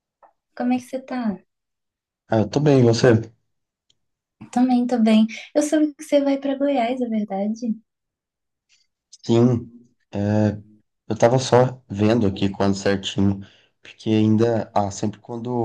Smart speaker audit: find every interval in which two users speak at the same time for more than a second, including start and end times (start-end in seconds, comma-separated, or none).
none